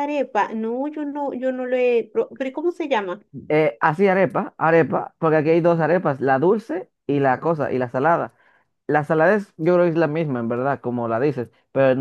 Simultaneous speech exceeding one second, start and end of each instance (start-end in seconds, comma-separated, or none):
none